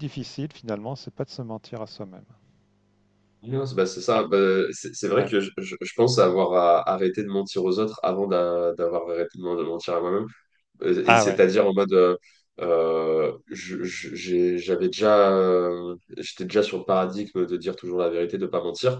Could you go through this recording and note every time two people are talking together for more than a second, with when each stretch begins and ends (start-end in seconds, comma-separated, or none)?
none